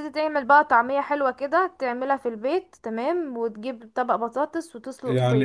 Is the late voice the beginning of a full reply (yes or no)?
yes